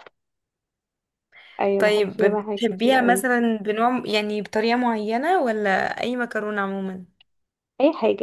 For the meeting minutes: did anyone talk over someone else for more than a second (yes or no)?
yes